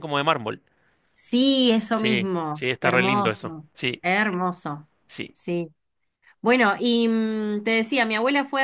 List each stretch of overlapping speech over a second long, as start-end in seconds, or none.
1.9-4.0